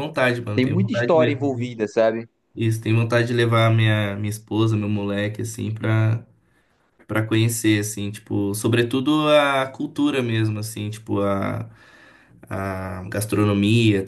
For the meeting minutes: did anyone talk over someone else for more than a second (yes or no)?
yes